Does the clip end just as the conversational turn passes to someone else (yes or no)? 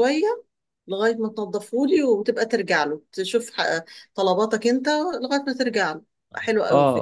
yes